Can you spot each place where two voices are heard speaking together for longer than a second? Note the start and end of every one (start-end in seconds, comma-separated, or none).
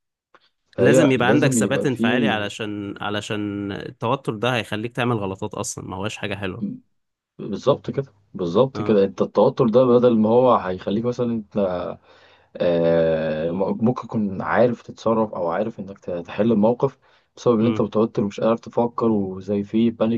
0.8-2.0